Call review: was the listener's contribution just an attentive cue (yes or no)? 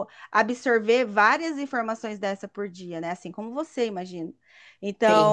yes